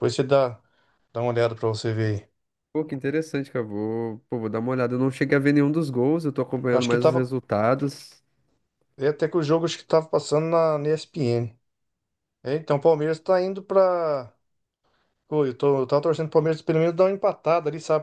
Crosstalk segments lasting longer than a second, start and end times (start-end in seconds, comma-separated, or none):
none